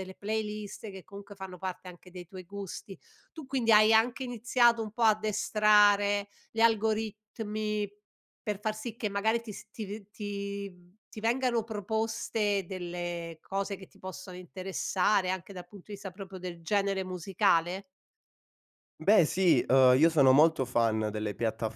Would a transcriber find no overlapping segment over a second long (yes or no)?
yes